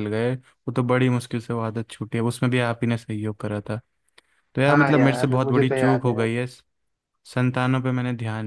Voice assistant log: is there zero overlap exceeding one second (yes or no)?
no